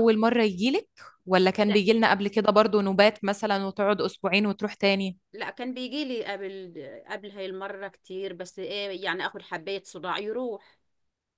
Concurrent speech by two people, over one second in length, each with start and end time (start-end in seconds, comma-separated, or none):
none